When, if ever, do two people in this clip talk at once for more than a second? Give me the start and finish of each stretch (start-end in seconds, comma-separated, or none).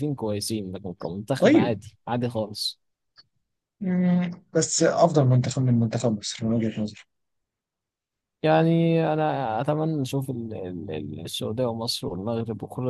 none